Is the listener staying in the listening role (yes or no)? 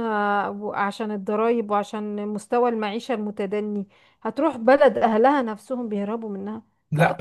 no